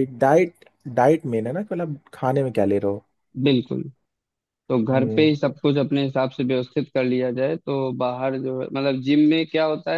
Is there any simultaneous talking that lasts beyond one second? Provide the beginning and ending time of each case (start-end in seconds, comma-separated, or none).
none